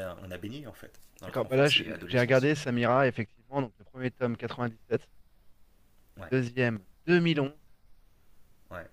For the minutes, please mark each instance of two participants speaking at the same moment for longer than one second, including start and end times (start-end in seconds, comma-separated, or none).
1.3-2.5